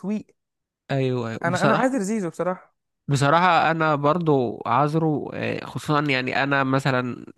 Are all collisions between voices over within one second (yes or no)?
yes